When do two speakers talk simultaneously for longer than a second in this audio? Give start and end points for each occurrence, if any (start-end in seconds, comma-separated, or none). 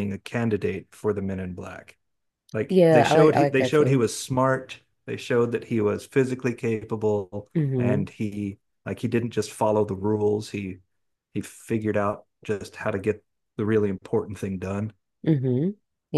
2.7-4.0